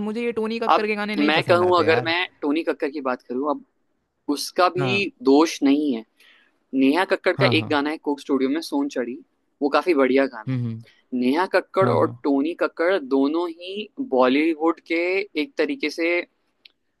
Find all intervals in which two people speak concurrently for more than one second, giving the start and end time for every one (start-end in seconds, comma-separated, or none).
0.7-2.1